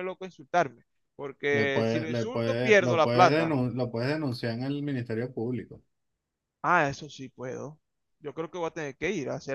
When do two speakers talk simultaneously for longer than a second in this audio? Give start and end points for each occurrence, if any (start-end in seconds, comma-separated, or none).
1.5-3.5